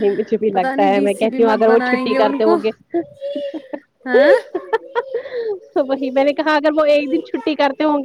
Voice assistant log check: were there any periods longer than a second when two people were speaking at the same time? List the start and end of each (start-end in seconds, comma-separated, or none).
0.5-2.5